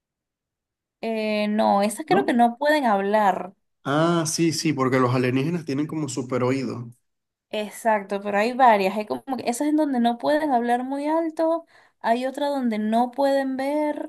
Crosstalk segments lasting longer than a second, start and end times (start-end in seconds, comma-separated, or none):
none